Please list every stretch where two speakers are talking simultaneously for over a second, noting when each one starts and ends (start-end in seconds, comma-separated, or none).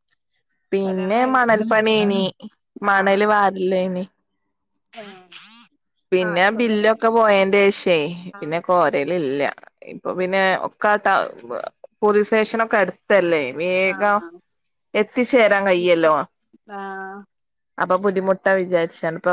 0.8-2.2